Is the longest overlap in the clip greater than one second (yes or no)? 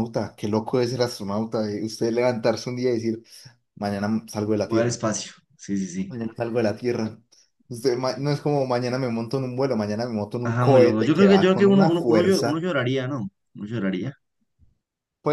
yes